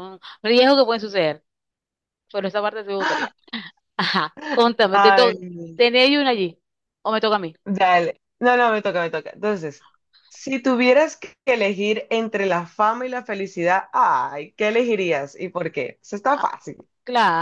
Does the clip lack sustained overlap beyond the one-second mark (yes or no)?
yes